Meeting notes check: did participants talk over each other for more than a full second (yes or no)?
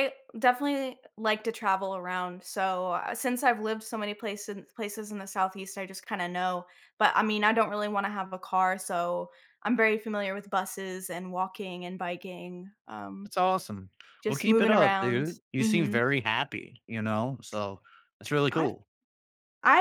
yes